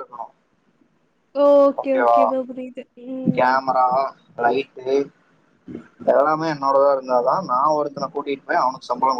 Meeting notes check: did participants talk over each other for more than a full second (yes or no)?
no